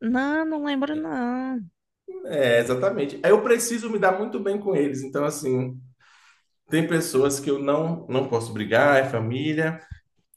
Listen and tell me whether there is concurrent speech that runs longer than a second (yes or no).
no